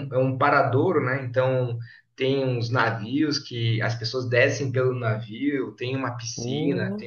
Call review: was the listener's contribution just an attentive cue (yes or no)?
yes